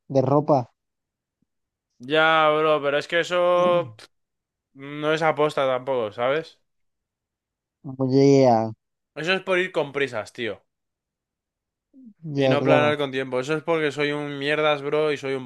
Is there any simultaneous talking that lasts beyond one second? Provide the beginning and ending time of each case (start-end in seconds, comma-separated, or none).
none